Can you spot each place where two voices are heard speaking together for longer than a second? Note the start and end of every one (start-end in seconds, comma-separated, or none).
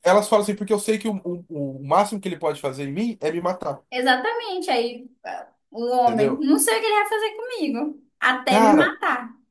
none